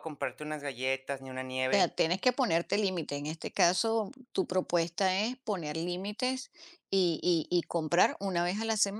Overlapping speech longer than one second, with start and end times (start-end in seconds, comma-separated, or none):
none